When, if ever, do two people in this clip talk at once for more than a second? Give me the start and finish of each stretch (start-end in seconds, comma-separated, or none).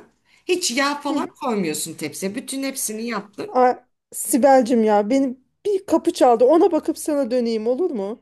none